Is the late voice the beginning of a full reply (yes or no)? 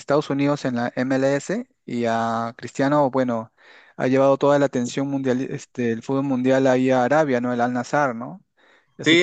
yes